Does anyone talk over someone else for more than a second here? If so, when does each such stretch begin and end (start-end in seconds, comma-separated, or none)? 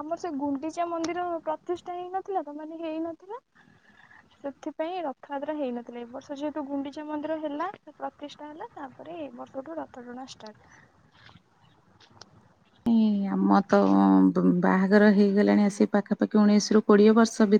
none